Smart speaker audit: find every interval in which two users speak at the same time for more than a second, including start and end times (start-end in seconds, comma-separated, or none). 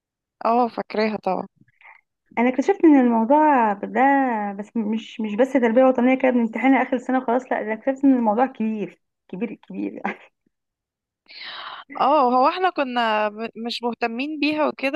none